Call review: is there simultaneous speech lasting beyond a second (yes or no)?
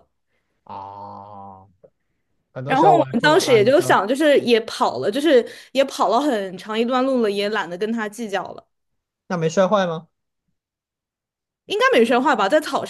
yes